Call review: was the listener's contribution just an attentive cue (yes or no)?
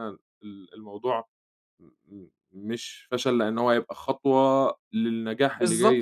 no